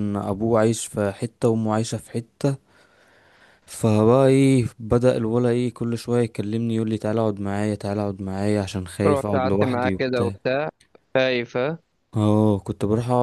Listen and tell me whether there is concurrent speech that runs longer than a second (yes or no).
yes